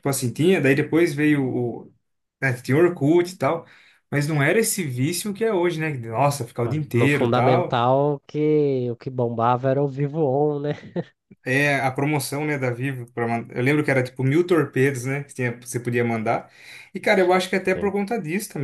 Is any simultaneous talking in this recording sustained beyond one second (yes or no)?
yes